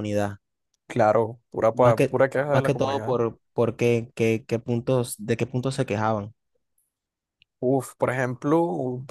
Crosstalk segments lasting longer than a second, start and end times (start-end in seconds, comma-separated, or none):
1.7-3.1